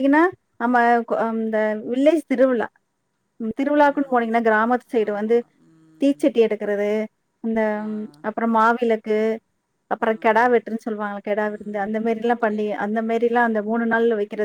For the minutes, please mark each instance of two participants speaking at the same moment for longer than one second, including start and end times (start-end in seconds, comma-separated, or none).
11.5-13.8